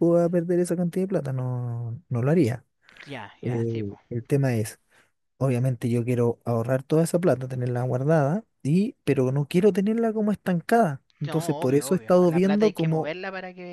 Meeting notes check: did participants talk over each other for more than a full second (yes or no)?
yes